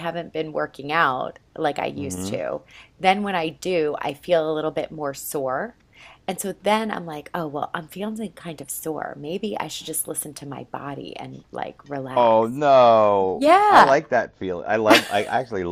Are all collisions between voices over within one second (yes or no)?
yes